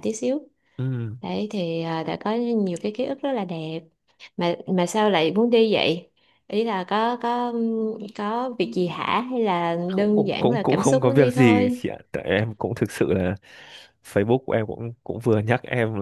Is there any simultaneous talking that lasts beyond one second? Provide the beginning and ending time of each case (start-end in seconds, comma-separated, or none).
9.9-11.8